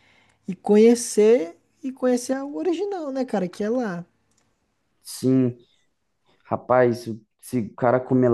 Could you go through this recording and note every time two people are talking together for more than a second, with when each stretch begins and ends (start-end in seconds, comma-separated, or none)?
none